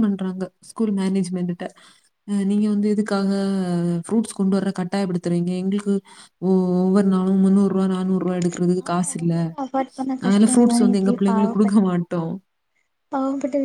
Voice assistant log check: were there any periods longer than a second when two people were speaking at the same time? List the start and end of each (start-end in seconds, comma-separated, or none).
10.2-11.8